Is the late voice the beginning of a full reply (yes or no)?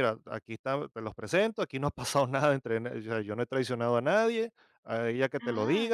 no